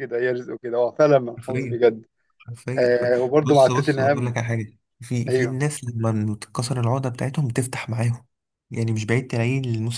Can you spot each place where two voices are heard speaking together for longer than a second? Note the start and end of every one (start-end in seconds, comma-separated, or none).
2.8-4.4